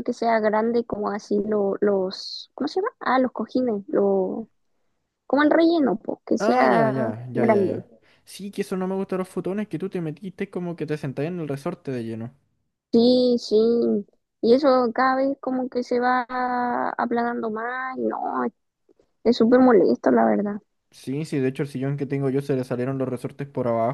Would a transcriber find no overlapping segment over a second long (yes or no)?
no